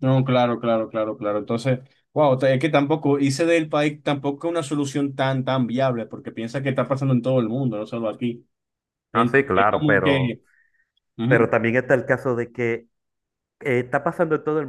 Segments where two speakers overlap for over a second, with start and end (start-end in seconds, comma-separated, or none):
9.1-10.4